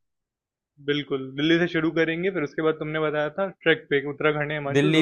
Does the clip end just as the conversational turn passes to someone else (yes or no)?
yes